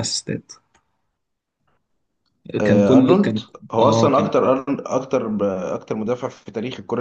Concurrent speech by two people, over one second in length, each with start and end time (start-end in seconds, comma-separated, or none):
2.6-4.3